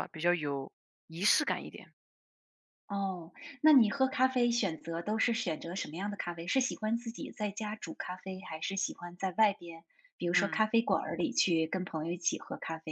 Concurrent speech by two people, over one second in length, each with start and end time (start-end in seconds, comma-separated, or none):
none